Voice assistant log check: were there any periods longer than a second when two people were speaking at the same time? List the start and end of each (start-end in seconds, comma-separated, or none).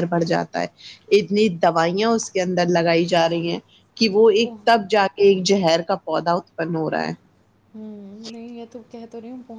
none